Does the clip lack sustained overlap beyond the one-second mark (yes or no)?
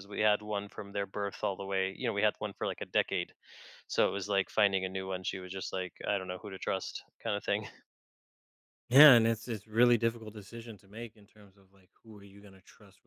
yes